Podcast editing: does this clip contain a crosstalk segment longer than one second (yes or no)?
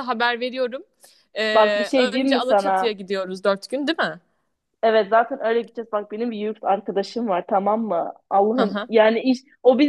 yes